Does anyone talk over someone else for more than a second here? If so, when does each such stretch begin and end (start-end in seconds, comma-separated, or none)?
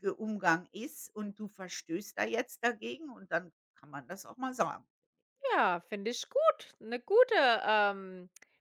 none